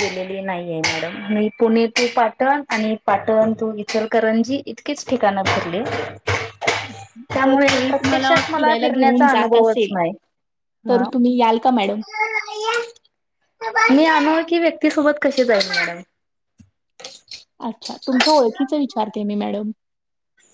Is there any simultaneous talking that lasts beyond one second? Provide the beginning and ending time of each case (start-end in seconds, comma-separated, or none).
7.4-9.9